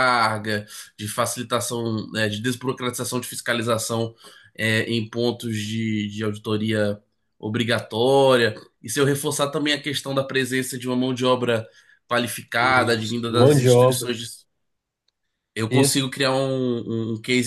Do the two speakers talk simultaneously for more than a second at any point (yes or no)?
yes